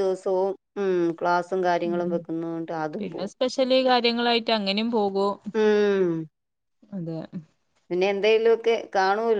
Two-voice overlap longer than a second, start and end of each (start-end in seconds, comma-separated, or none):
none